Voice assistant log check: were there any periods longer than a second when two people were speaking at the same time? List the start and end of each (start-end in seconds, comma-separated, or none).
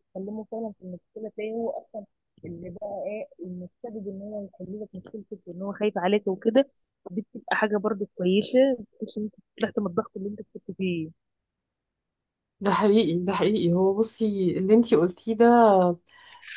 none